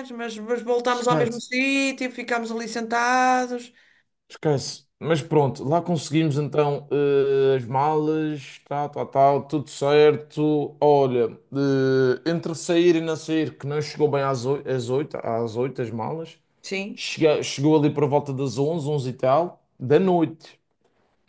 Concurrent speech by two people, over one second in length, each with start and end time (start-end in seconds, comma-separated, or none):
none